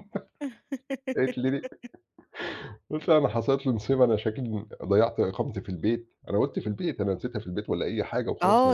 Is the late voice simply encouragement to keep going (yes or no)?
no